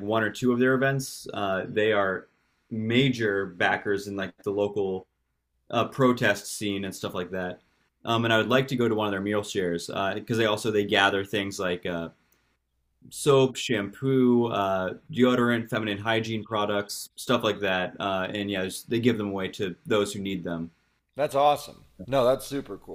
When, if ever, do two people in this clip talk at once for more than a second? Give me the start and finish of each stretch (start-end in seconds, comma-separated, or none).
none